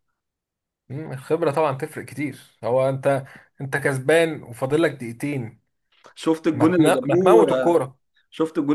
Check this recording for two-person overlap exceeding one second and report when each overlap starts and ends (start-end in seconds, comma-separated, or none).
6.5-7.8